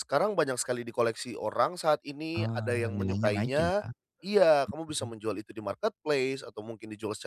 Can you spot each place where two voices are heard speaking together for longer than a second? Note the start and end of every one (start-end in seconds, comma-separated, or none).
2.4-3.8